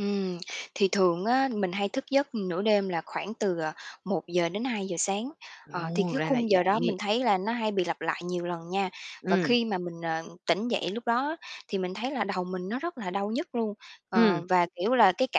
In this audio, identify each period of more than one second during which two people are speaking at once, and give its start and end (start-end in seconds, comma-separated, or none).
5.7-6.9